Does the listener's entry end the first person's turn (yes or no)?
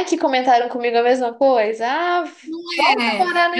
yes